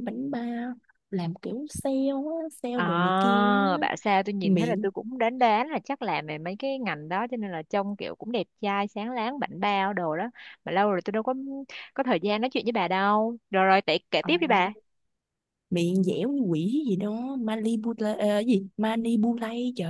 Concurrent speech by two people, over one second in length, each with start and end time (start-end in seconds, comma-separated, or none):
none